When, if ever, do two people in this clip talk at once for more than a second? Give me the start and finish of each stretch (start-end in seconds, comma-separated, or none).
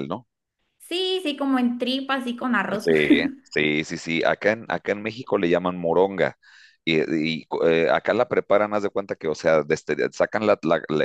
none